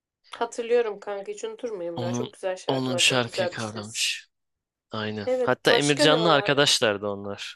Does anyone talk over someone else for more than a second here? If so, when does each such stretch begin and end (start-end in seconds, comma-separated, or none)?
1.9-4.1, 5.2-6.6